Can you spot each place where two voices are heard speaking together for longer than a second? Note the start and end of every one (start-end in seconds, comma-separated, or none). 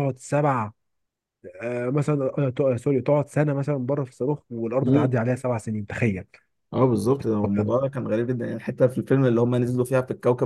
none